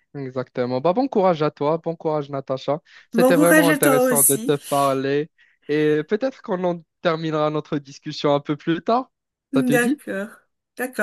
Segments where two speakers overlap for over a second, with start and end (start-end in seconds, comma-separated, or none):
3.1-4.5